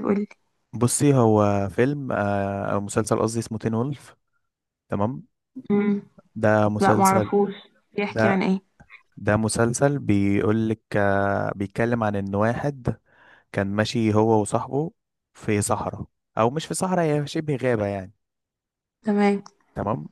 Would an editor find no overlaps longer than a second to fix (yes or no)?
yes